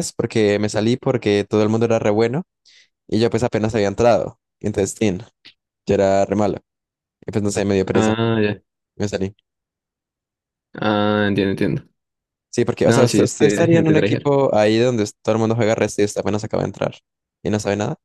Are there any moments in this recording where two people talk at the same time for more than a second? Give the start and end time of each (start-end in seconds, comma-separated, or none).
12.8-14.3